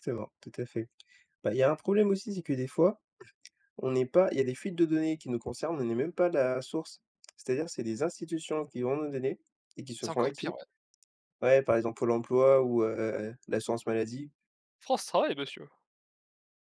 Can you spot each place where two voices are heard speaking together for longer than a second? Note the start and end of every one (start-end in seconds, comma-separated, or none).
none